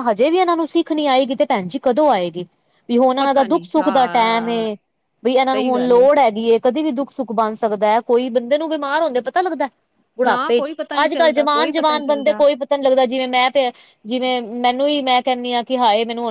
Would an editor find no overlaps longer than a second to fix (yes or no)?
no